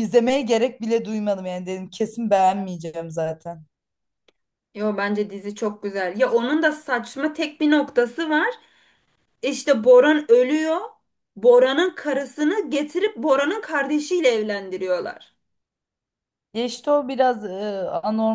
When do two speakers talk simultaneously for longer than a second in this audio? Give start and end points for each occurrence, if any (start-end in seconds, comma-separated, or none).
none